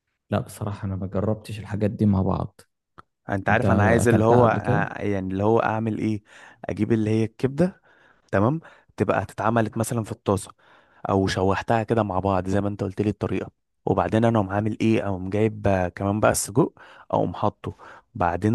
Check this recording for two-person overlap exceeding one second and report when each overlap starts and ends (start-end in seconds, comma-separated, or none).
3.5-4.9